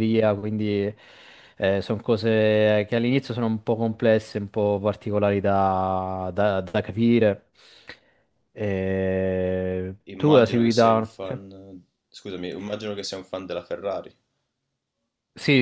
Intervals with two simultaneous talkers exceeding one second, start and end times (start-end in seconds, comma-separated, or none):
10.1-11.4